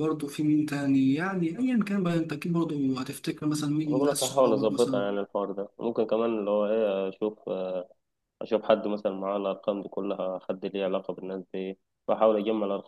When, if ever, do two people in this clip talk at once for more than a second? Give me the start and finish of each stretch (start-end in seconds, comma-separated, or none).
3.9-5.2